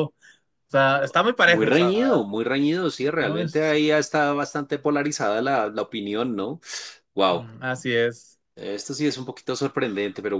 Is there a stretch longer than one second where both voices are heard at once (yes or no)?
no